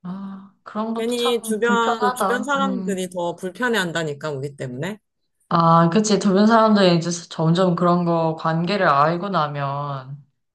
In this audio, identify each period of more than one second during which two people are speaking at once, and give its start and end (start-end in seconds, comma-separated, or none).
0.9-3.1